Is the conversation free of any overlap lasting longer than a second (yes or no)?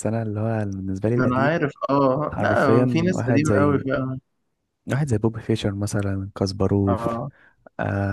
no